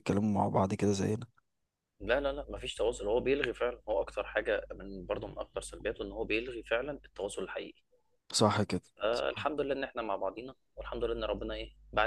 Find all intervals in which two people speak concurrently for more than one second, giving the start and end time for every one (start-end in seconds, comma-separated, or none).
none